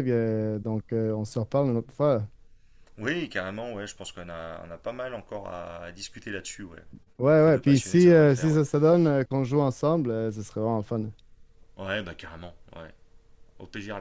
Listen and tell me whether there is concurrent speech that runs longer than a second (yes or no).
yes